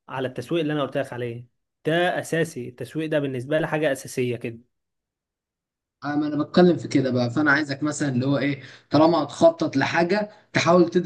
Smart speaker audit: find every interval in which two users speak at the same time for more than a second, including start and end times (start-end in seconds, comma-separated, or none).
none